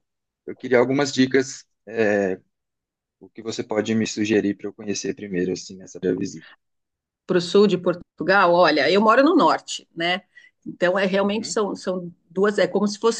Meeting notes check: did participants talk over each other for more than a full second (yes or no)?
no